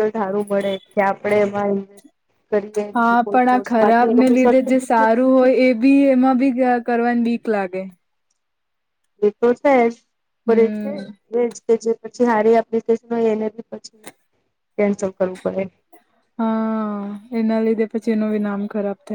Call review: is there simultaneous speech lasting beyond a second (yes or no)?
yes